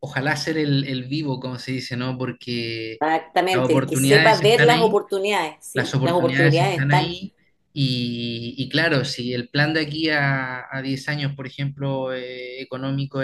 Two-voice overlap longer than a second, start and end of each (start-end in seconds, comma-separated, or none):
3.5-5.0, 5.7-7.2